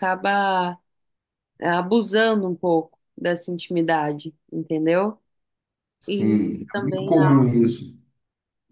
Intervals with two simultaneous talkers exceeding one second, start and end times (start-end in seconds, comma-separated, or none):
6.1-7.4